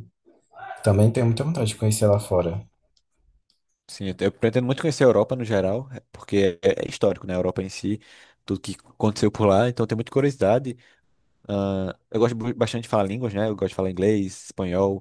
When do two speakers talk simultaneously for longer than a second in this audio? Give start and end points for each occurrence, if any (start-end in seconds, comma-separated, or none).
none